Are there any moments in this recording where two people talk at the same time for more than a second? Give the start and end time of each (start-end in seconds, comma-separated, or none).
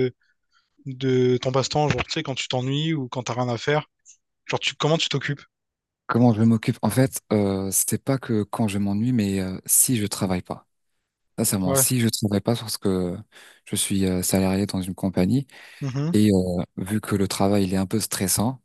none